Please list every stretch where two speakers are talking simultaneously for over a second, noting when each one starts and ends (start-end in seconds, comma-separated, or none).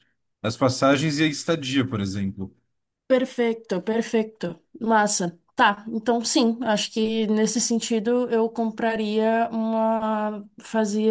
none